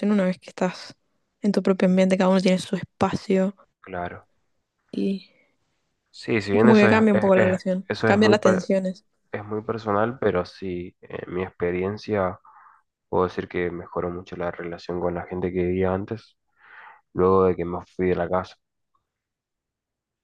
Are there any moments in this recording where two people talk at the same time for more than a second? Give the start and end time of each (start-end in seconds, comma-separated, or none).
6.5-8.7